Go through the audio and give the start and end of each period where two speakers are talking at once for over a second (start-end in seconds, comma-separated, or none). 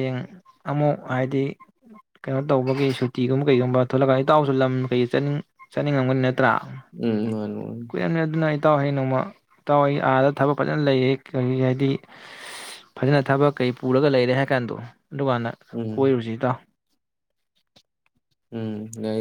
none